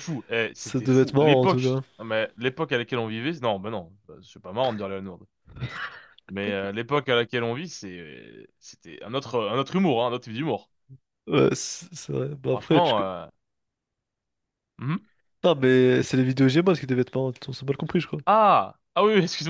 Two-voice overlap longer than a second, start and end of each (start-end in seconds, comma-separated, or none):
0.6-1.8